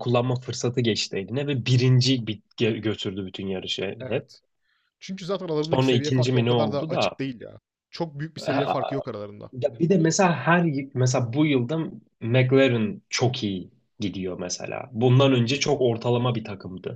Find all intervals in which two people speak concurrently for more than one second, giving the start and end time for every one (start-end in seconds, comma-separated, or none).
5.7-7.2